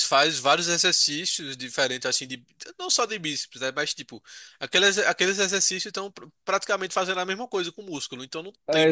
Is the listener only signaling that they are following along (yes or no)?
no